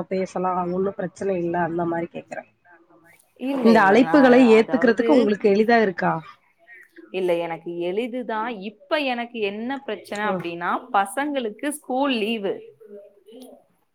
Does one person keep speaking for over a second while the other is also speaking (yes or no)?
no